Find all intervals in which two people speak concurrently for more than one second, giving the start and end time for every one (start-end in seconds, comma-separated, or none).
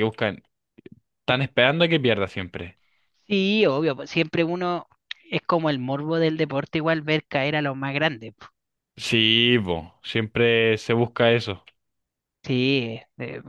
none